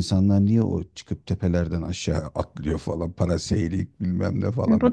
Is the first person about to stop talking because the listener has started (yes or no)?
yes